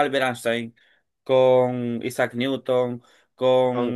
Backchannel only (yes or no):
yes